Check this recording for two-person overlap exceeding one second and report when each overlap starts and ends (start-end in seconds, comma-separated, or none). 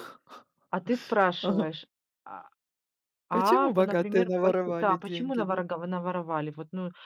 3.3-5.6